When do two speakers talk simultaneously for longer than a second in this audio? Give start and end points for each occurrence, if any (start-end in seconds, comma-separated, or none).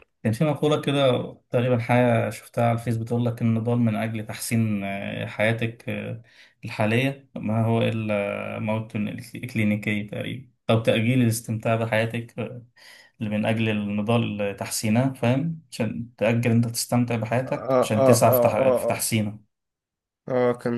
17.4-19.1